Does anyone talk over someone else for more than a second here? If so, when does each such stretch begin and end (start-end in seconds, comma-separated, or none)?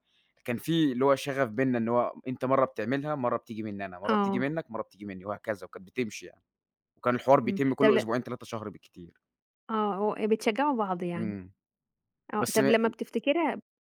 none